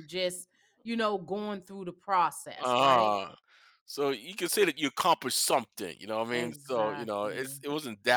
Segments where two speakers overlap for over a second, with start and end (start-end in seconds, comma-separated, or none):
6.3-7.6